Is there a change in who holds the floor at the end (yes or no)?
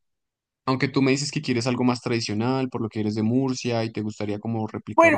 yes